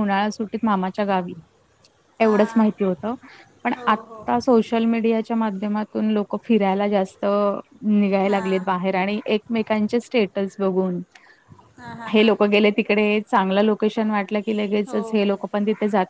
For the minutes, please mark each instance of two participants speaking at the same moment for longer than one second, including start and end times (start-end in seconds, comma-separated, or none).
none